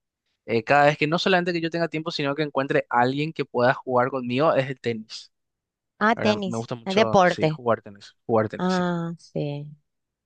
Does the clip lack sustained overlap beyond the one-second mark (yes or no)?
no